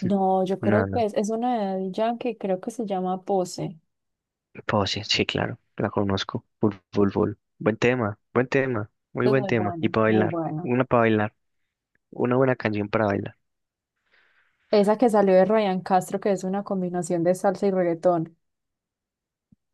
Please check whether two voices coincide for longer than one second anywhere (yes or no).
yes